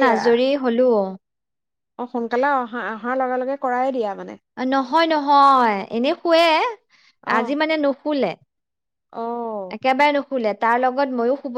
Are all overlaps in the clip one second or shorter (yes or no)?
yes